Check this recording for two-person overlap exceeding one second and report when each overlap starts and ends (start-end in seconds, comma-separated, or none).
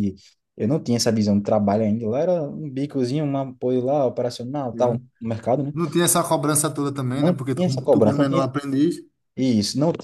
7.1-8.4